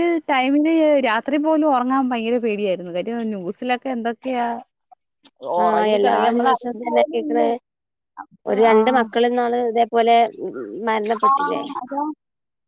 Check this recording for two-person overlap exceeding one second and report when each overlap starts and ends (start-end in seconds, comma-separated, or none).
5.6-7.5